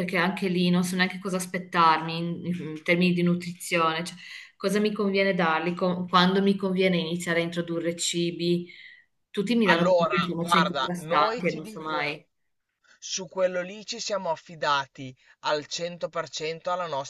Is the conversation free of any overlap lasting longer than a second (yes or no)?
no